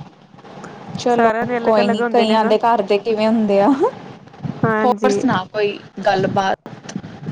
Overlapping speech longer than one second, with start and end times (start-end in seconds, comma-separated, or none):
1.1-2.5